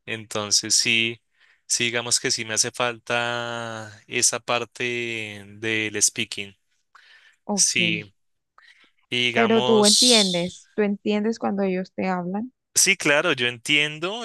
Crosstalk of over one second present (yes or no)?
yes